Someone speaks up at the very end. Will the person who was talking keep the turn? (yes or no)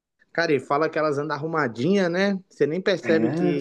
no